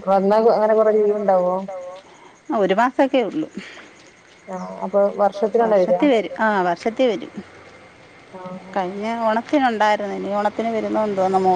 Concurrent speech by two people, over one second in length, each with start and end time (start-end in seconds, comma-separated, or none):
none